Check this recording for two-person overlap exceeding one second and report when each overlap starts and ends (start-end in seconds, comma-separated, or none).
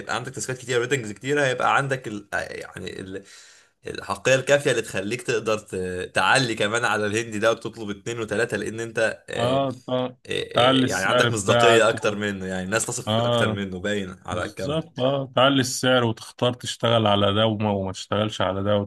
10.5-12.2